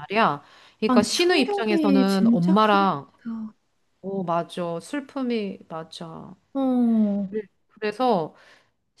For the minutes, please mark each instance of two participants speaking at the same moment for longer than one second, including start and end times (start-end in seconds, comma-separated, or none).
0.9-2.9